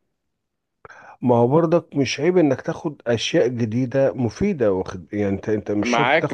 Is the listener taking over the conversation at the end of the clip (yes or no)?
yes